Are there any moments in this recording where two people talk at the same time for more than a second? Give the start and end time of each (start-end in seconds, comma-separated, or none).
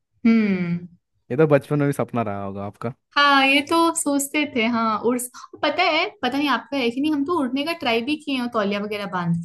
none